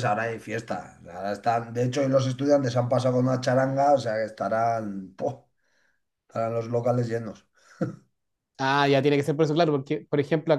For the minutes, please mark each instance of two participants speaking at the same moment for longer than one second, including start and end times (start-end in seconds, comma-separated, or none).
none